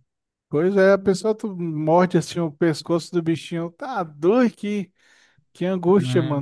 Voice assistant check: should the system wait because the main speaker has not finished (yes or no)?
no